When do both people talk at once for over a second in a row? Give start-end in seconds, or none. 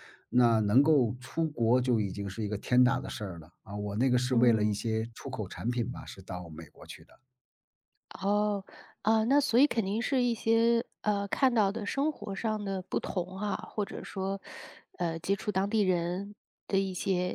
none